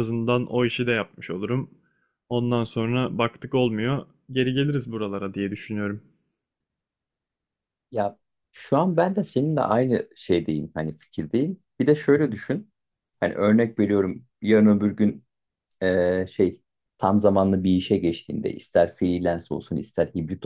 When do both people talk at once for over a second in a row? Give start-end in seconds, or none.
none